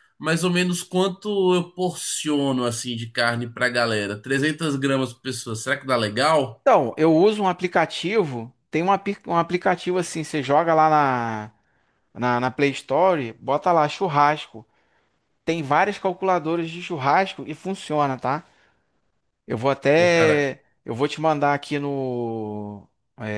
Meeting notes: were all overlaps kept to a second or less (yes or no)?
yes